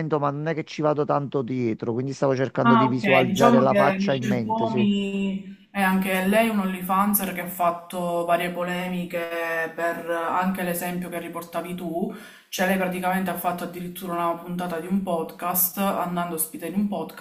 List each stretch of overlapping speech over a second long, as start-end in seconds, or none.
2.6-4.9